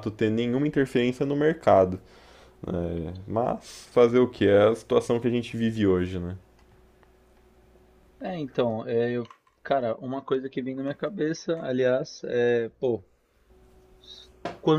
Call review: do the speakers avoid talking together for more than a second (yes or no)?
yes